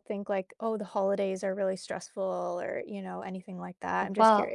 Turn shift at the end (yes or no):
yes